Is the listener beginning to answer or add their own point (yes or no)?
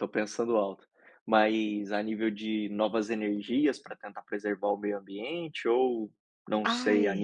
no